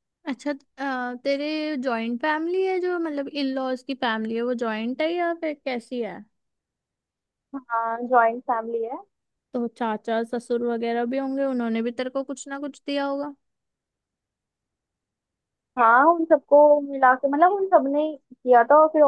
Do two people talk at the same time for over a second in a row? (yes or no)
no